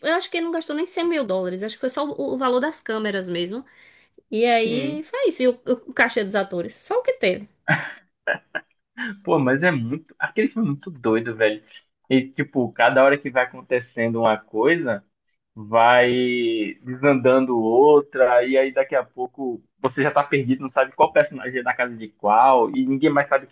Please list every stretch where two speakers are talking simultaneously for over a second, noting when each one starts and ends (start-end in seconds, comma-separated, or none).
none